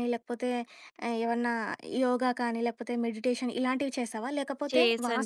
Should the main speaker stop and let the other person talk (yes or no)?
no